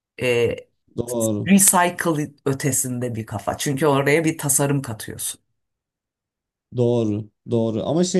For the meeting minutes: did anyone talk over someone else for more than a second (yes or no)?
no